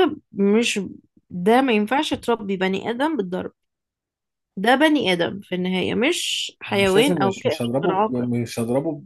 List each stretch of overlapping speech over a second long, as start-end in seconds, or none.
6.7-8.3